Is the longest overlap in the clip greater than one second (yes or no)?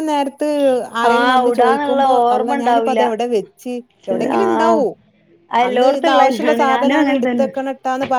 yes